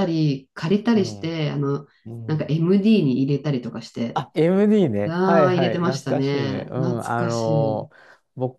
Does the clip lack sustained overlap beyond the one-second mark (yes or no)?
no